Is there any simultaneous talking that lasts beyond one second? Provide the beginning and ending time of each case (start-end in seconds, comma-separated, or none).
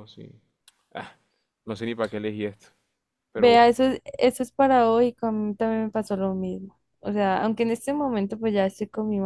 none